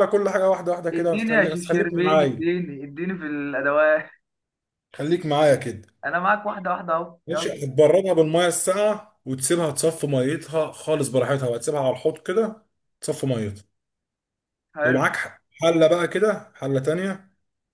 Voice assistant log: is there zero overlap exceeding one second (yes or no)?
no